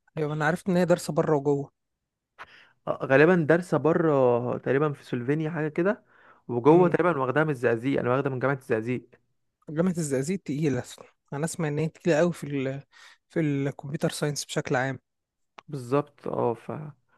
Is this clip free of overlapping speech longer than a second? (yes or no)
yes